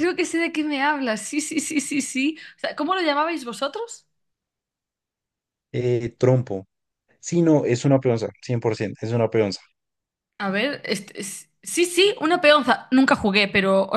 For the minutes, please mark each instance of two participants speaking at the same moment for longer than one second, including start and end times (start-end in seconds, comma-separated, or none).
none